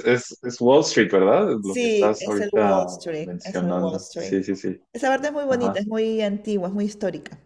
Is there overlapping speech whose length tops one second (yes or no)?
yes